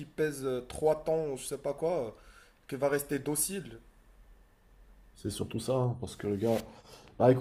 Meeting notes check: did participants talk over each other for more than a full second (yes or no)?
no